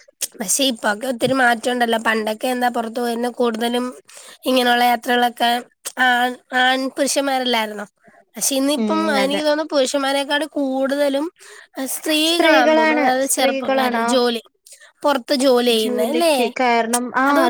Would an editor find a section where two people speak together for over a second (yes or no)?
yes